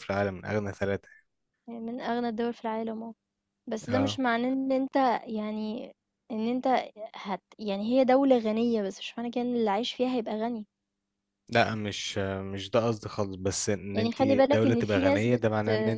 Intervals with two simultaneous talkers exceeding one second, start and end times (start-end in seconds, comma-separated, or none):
13.9-15.4